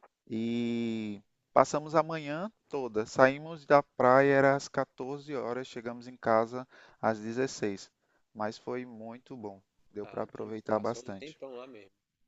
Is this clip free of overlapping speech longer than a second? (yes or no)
no